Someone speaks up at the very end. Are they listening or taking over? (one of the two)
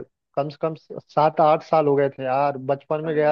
listening